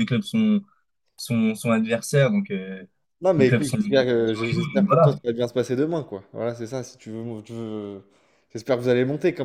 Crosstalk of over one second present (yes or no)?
yes